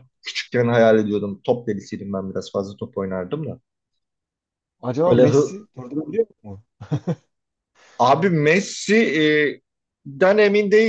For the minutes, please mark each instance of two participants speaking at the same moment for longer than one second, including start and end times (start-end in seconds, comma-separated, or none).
none